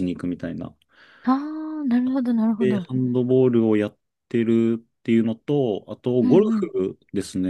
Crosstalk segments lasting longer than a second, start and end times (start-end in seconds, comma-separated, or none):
none